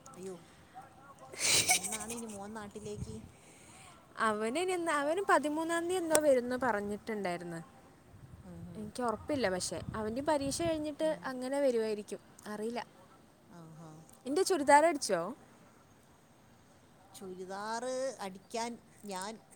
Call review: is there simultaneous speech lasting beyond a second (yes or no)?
no